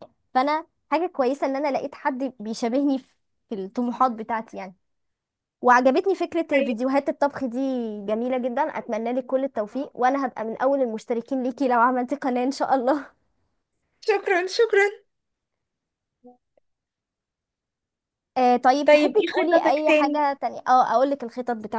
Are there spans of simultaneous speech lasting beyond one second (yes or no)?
yes